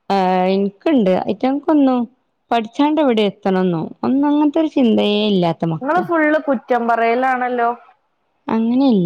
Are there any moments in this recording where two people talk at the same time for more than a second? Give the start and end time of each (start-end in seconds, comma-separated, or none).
none